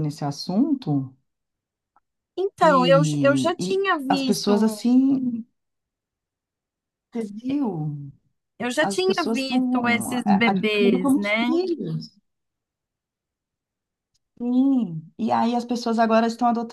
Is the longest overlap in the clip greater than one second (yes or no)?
yes